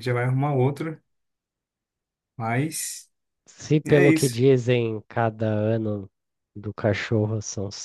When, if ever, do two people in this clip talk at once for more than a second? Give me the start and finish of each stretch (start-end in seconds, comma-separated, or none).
none